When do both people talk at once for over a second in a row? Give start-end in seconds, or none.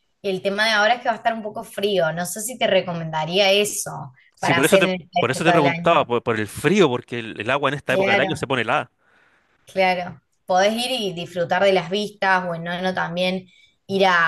4.3-6.0